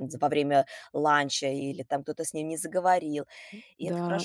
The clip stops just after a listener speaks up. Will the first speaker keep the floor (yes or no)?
no